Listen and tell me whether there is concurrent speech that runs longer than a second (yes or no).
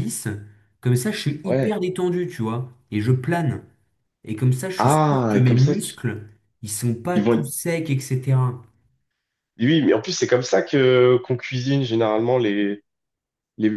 yes